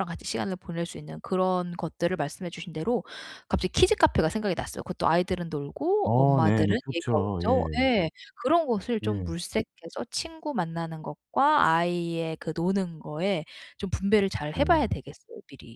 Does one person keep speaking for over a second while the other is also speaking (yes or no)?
yes